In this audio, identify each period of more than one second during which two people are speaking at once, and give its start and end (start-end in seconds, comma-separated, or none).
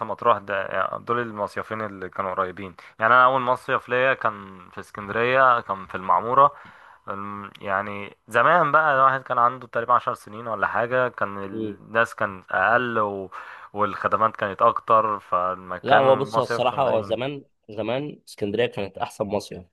15.8-17.1